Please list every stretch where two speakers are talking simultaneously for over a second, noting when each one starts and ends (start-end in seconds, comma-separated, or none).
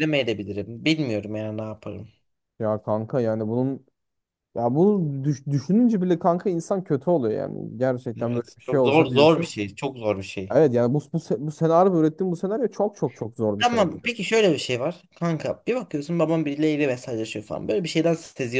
8.2-9.5